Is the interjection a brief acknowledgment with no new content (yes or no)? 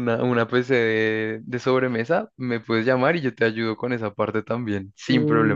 no